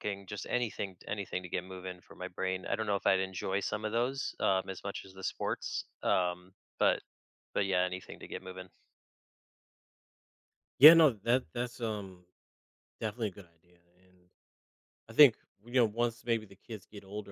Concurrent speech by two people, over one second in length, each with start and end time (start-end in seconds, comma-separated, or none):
none